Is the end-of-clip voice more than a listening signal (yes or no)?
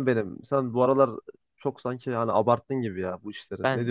yes